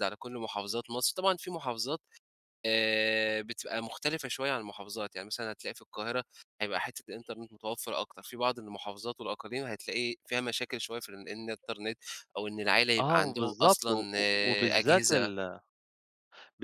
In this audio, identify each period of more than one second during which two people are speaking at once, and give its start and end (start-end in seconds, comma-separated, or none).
13.1-15.3